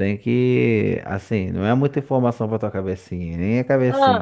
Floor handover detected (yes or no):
no